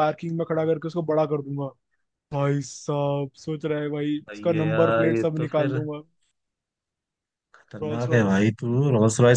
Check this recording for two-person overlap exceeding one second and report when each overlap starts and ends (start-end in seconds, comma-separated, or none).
4.3-5.8